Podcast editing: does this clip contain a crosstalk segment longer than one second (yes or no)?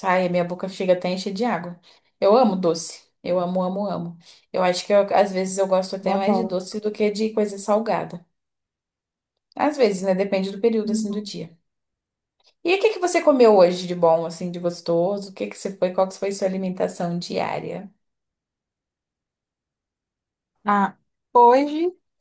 no